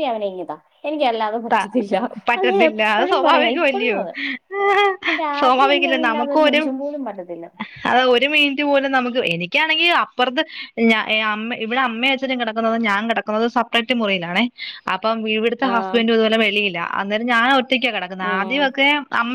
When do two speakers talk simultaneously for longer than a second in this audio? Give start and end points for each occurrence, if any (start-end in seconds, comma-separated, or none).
2.4-4.0